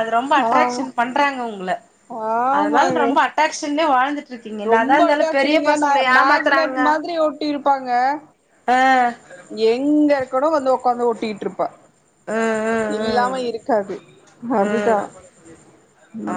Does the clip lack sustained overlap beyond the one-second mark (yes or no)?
no